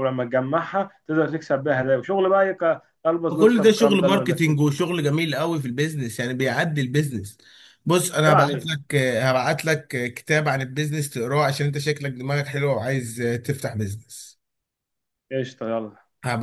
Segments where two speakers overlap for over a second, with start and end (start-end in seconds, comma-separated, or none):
3.3-4.7